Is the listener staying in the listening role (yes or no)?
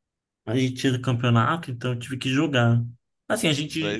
yes